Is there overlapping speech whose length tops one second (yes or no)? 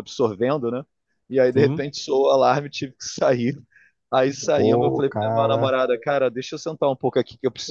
yes